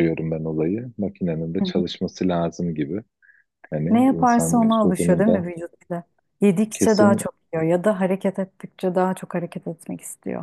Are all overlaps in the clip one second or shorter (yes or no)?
no